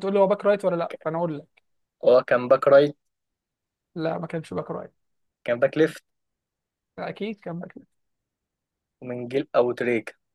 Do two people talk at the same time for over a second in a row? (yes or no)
no